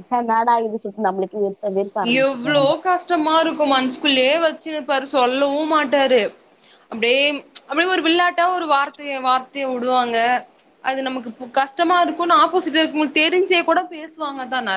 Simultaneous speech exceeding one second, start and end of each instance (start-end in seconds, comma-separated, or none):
none